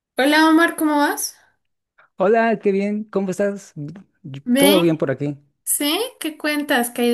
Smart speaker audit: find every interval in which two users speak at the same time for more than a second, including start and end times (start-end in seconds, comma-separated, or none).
none